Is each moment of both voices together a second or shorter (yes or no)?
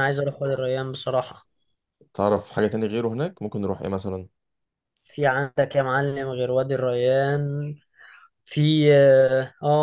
yes